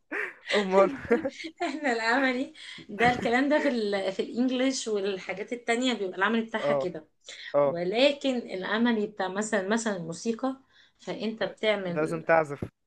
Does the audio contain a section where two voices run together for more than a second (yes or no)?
no